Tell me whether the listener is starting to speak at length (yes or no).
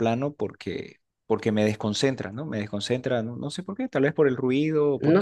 yes